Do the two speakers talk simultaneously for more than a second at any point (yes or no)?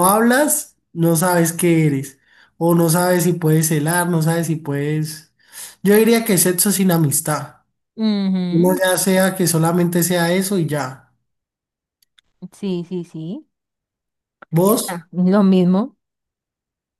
no